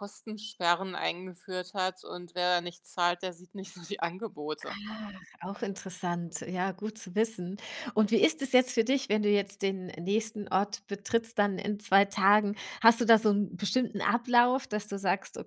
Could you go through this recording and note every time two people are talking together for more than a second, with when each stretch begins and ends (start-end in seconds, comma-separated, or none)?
none